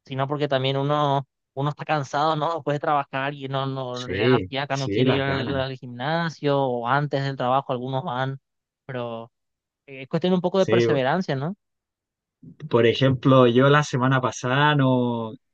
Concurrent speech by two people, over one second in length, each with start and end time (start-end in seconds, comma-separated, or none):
3.9-5.6